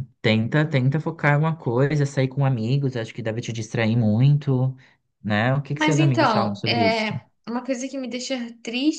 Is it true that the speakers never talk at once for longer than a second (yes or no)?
no